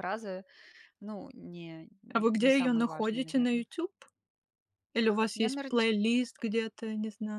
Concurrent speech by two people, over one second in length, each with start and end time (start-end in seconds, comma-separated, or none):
2.4-3.6